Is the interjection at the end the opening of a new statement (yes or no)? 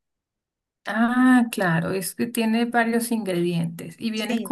no